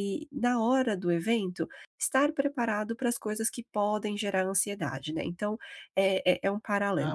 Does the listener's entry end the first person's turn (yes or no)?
no